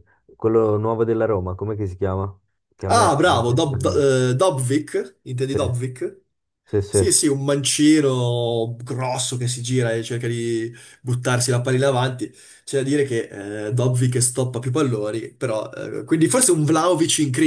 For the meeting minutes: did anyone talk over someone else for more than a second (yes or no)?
yes